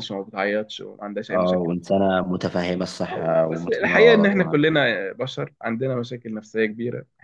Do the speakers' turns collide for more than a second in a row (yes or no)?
yes